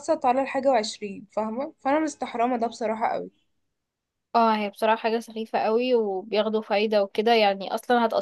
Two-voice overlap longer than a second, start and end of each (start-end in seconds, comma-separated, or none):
none